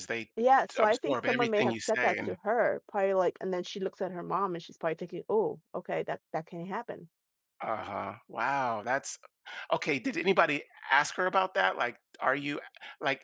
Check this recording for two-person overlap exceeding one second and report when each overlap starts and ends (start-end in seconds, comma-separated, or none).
0.8-2.4